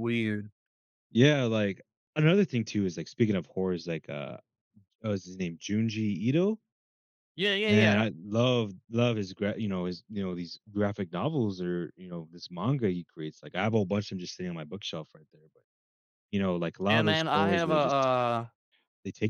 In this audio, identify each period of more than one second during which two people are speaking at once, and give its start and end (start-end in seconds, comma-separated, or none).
16.9-18.1